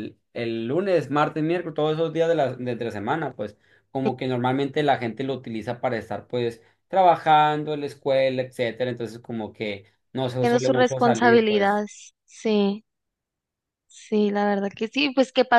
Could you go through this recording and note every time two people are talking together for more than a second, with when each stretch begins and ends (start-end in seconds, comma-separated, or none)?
10.4-11.8